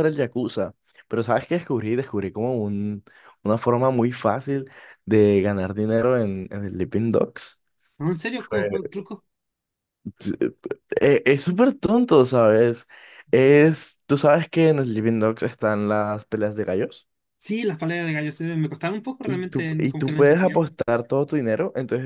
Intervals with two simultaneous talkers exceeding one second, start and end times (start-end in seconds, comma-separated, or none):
19.2-20.6